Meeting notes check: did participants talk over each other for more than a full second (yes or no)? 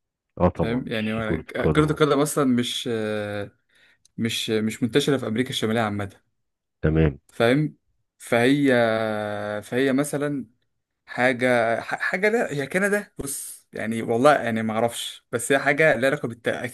yes